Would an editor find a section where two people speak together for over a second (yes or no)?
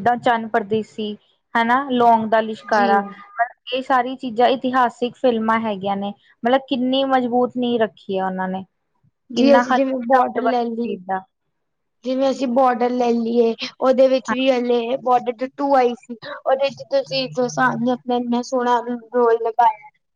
yes